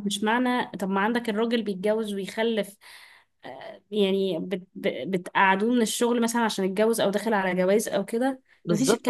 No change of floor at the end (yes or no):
no